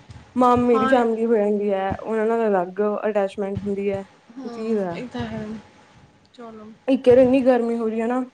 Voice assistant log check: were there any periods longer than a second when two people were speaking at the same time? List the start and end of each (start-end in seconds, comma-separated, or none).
none